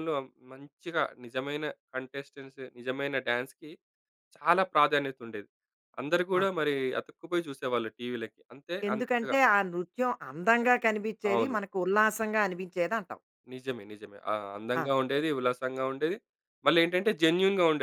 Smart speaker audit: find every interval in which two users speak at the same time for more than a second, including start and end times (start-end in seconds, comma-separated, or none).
none